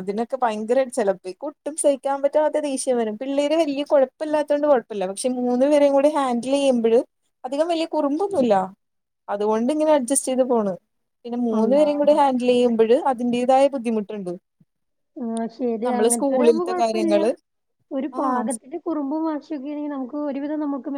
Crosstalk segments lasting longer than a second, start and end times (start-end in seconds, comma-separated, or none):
15.9-17.2